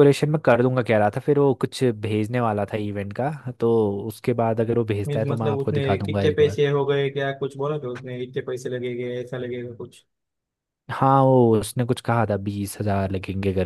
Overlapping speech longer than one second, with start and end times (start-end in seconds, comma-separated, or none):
5.1-6.6